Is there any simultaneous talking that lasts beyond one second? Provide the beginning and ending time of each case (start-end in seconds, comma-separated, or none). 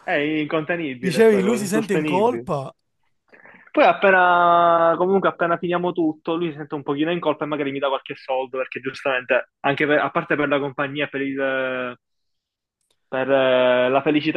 1.1-2.5